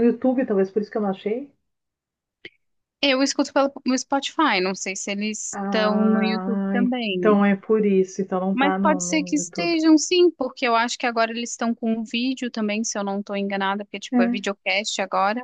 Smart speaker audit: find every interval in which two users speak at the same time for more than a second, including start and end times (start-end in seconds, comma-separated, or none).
5.5-7.4, 8.5-9.8